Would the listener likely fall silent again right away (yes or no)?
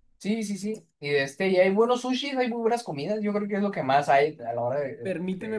no